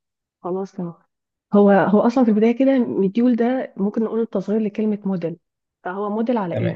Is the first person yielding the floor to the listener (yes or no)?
no